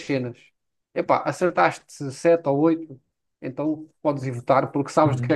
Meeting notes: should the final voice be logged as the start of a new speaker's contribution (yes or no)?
yes